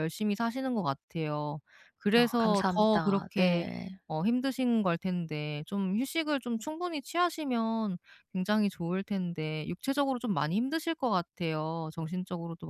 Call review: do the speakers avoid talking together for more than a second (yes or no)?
no